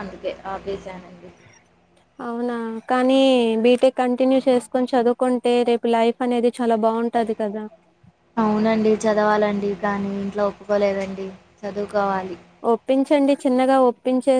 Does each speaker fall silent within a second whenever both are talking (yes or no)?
yes